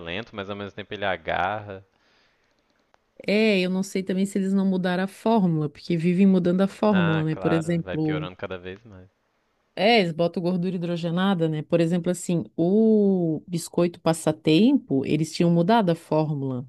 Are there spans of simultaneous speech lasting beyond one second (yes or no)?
yes